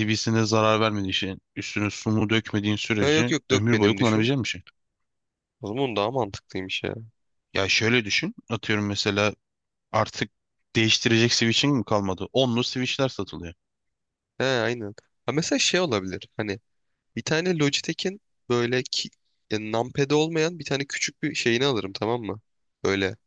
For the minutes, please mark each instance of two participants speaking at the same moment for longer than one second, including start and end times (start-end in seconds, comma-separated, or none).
3.0-4.3